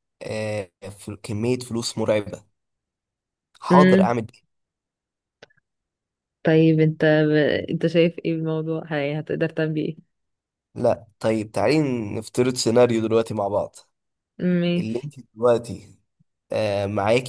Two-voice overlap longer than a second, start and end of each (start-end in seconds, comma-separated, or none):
none